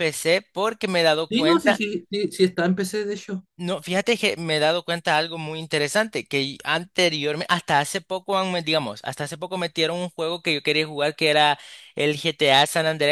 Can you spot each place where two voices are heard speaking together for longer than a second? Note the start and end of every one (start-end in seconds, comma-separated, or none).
none